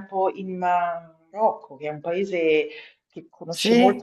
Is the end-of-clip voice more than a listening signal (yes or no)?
no